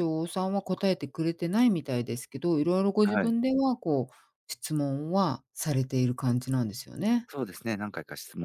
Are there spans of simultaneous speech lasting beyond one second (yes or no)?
no